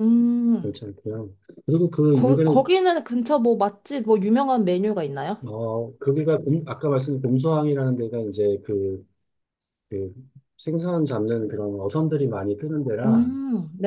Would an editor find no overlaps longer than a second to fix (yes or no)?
yes